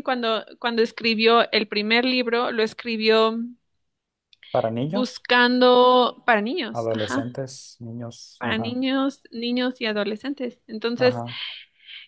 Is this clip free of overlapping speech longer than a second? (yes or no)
yes